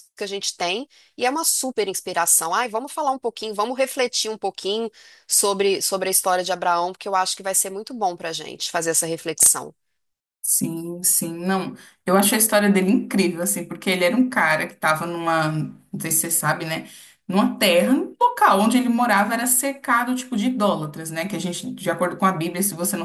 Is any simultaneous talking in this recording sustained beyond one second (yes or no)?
no